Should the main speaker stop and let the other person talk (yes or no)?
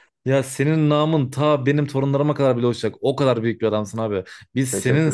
no